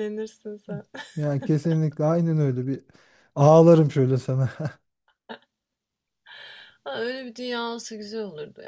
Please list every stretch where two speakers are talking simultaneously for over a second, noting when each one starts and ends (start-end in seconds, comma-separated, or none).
none